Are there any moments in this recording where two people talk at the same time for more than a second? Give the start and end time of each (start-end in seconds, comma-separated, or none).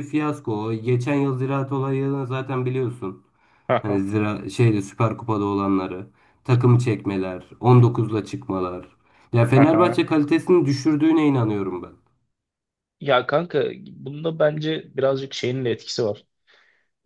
none